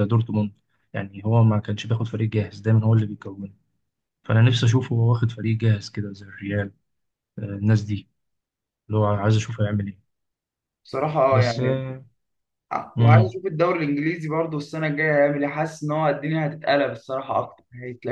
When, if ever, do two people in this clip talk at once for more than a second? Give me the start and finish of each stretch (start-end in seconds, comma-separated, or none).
none